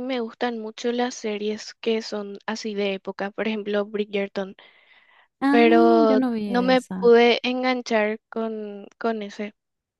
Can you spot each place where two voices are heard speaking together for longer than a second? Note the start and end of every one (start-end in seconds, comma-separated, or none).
5.5-7.1